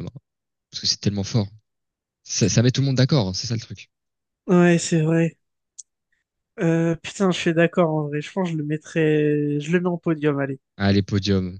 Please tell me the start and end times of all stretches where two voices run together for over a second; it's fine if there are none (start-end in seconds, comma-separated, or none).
none